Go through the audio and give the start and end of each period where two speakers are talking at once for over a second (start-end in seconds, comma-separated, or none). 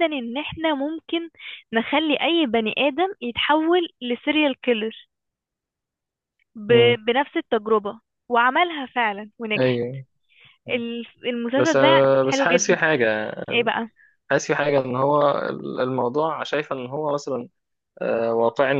11.6-12.8